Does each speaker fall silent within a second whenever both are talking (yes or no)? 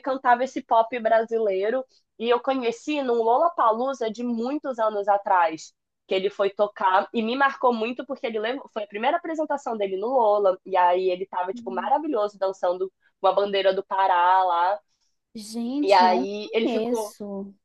no